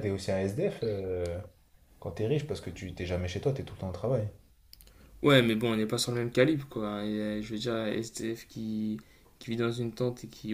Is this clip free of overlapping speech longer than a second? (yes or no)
yes